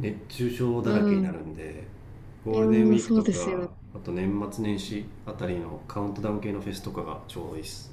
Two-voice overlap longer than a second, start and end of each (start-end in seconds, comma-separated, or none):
2.5-3.7